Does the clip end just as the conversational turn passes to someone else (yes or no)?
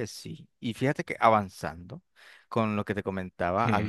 yes